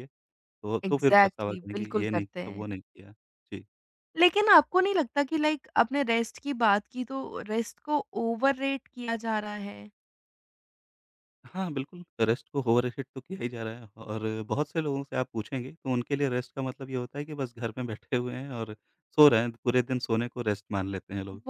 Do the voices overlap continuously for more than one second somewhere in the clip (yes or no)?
yes